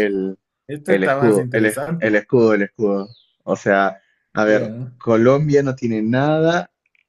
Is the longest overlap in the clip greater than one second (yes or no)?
yes